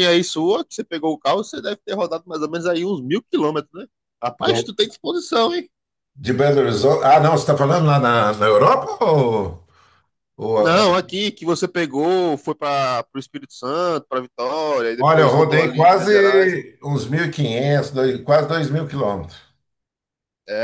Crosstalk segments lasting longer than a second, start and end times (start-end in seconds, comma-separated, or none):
15.0-16.6